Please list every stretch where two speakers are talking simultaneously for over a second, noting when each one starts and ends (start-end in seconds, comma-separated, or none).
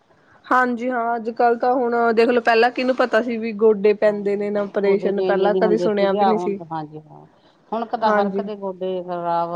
4.1-6.6